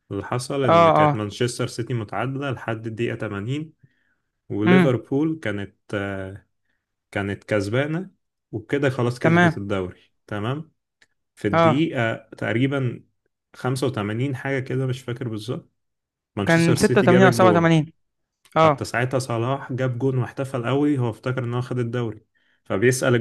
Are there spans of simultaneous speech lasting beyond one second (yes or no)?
yes